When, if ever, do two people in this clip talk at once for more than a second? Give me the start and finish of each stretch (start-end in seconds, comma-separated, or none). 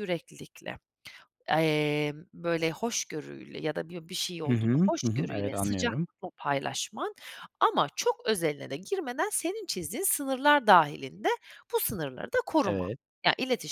4.5-6.1